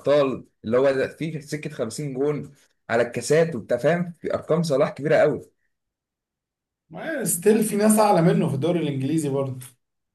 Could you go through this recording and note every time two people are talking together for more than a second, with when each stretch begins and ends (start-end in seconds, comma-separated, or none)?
none